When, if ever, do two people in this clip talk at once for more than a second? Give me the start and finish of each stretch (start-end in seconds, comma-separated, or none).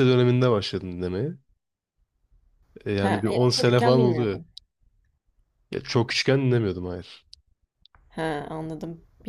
3.0-4.4